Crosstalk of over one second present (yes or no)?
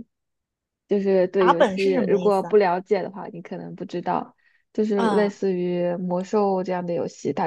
yes